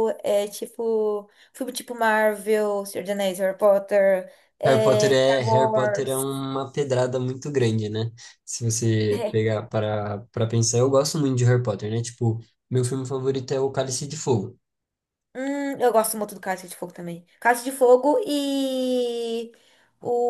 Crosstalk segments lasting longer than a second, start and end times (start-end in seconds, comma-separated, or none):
4.6-6.3